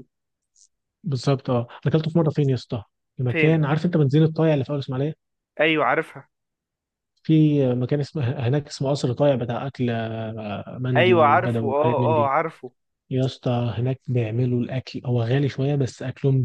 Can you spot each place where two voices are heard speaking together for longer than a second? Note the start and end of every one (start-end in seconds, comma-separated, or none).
11.0-12.3